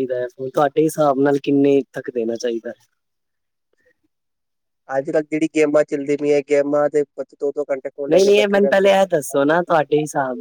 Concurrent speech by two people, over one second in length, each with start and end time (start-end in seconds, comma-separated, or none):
8.1-9.7